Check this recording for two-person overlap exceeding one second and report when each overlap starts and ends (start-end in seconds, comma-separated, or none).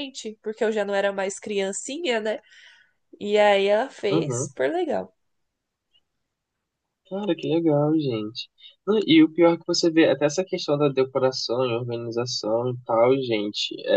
none